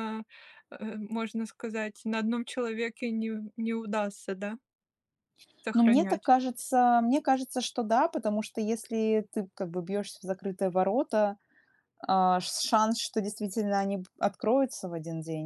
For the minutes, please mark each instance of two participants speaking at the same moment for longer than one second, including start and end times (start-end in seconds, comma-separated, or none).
none